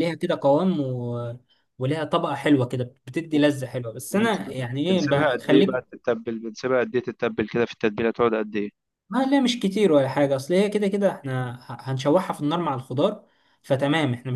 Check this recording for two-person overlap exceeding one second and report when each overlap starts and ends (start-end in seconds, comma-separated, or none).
4.1-5.8